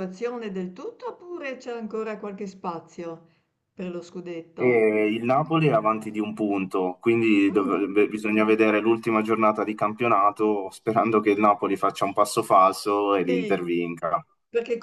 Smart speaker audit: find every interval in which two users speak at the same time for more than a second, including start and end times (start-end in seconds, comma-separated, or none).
none